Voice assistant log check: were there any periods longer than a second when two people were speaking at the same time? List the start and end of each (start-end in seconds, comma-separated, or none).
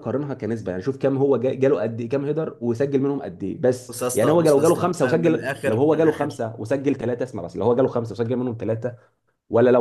3.9-6.4